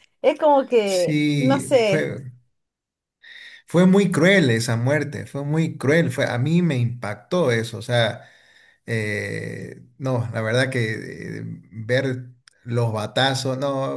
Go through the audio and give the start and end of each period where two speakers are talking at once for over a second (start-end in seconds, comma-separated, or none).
0.8-2.1